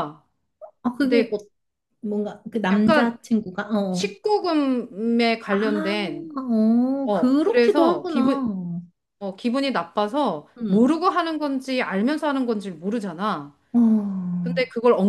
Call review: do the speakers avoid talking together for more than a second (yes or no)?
no